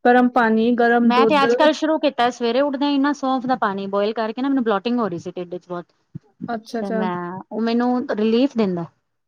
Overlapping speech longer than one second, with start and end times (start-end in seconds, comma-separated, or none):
none